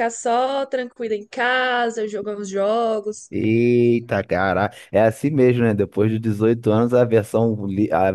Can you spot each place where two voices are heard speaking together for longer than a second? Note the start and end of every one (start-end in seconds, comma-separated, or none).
none